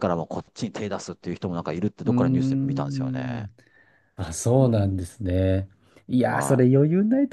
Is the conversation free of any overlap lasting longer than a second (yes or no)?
no